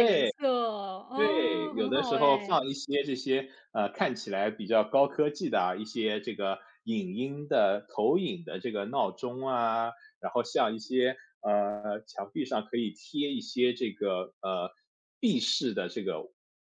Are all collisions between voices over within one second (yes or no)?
no